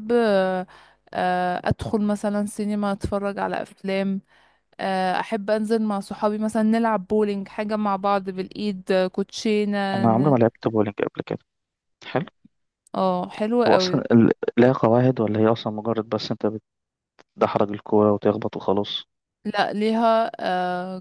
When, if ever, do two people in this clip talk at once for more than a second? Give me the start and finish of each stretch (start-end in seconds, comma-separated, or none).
none